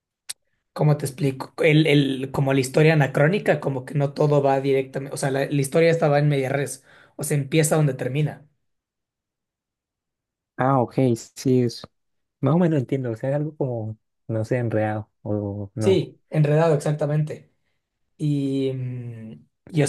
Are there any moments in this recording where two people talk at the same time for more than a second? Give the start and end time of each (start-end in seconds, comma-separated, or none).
none